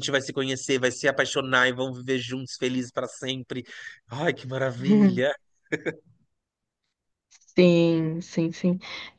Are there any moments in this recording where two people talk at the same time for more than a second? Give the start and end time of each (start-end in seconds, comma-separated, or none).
none